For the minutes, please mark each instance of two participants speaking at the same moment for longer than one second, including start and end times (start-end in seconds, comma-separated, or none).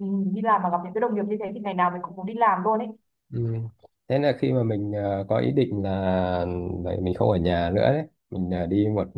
none